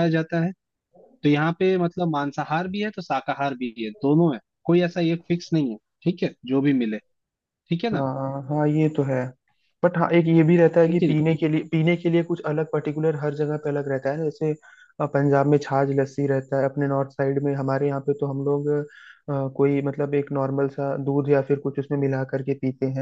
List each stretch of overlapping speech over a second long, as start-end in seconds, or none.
none